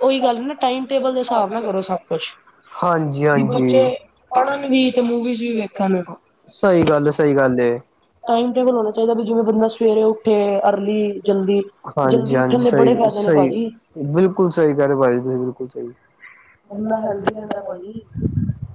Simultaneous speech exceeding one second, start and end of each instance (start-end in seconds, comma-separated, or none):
12.1-13.5